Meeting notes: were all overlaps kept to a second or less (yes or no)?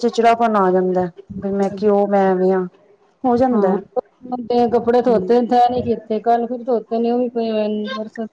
yes